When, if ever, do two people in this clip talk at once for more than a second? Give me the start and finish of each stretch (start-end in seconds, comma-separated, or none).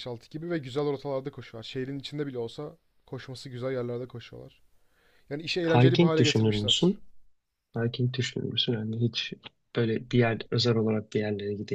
5.7-7.0